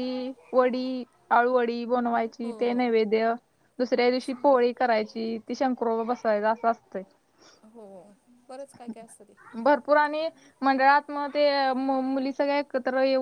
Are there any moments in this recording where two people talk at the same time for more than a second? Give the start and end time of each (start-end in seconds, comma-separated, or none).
none